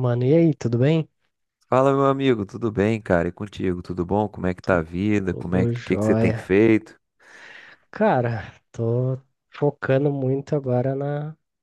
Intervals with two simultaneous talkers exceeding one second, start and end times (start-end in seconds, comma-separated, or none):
5.3-6.5